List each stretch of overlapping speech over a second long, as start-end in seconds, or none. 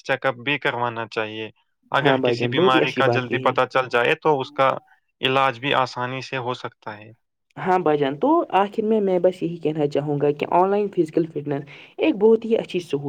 2.0-3.5